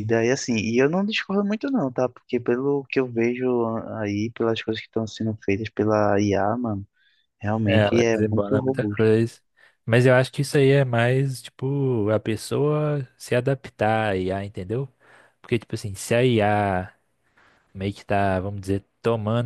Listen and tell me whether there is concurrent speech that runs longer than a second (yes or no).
yes